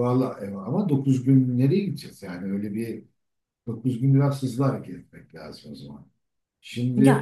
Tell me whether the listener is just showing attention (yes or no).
no